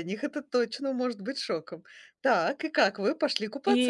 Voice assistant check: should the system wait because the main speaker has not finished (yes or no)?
no